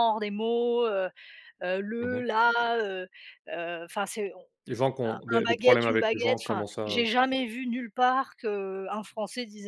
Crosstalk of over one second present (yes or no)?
yes